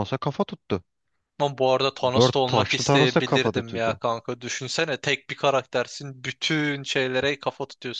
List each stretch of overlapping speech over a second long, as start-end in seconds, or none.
2.1-4.0